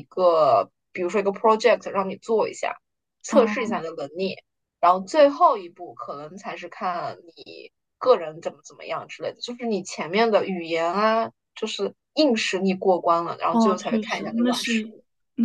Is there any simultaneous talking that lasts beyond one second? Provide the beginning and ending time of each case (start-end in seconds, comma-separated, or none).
13.5-14.9